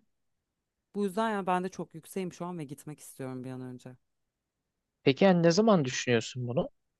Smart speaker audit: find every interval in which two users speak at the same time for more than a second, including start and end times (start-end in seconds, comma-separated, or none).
none